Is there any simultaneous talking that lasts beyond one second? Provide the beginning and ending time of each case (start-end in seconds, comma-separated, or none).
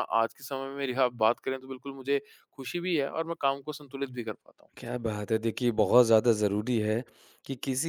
none